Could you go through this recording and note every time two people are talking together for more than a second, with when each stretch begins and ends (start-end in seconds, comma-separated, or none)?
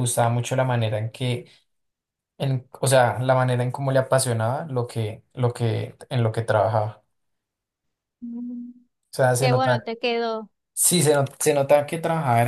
none